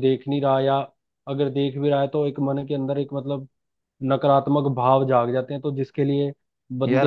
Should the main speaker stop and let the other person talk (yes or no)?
yes